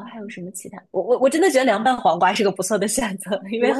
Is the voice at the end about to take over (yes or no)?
yes